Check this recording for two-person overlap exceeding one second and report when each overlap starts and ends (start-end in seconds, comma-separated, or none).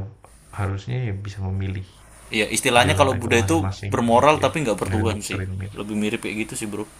2.8-5.8